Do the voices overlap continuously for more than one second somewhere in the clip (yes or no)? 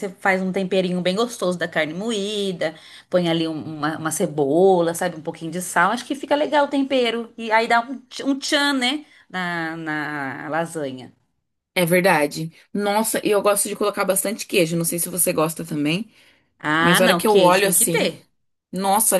yes